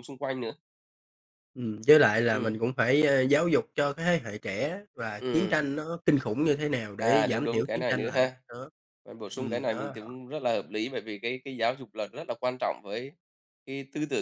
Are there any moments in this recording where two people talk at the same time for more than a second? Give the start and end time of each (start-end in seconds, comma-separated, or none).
7.0-8.3